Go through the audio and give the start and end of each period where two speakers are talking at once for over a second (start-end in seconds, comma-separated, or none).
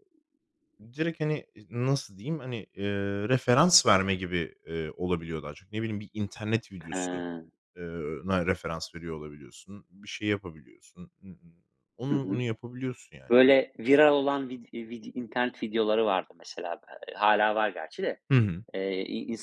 none